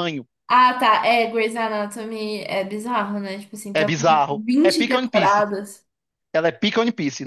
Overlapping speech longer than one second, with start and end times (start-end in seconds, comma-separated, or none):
3.7-5.5